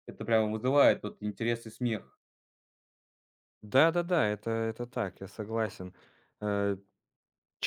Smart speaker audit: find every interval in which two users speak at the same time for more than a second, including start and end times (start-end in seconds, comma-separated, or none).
none